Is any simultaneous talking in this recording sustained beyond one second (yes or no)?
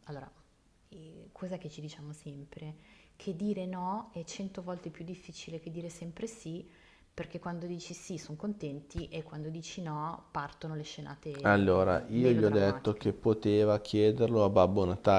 yes